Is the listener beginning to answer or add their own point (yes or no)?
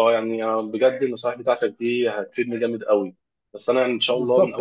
no